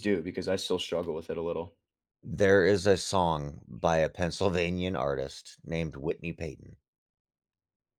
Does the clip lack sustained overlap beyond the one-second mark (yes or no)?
yes